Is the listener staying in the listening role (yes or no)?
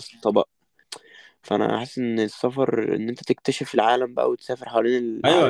no